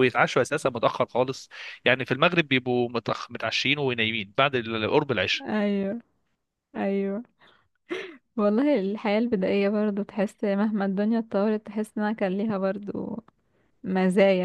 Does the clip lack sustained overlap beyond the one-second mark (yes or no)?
yes